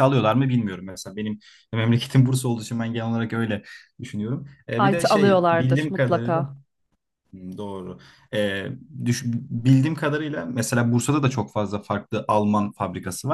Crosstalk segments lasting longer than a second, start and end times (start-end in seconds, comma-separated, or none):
4.9-6.4